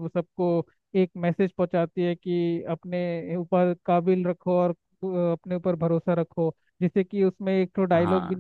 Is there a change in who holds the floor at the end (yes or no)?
no